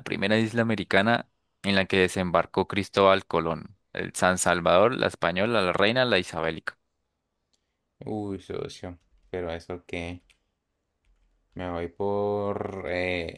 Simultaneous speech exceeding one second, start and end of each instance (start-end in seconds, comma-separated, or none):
none